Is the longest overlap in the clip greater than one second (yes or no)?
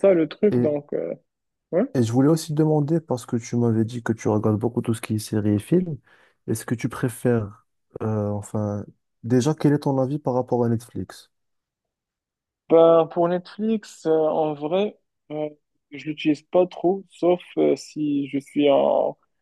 no